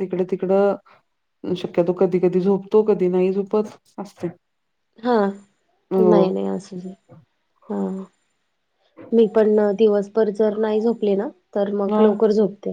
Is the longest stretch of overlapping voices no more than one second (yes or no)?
yes